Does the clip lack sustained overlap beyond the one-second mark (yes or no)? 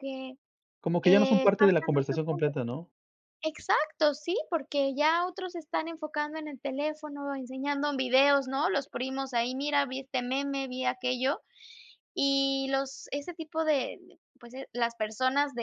no